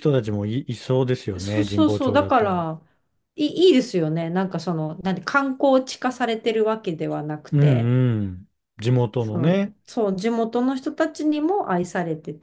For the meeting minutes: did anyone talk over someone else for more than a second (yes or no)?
yes